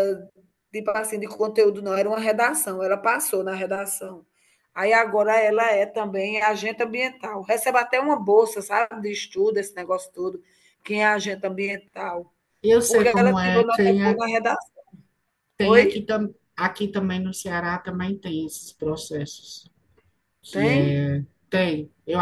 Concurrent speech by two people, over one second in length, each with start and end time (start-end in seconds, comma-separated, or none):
12.8-14.2